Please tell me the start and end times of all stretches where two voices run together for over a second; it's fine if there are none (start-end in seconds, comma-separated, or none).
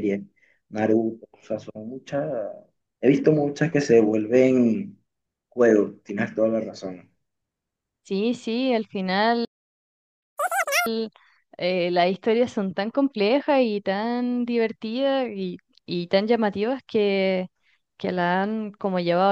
none